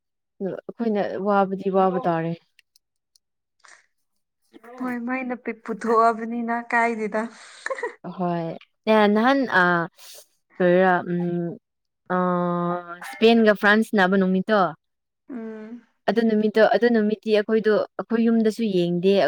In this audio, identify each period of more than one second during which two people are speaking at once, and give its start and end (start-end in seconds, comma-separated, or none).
none